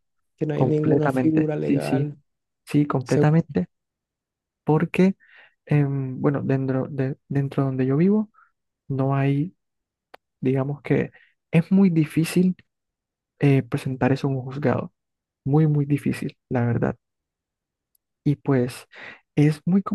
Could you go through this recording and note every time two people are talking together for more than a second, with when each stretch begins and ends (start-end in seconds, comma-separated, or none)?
0.5-2.1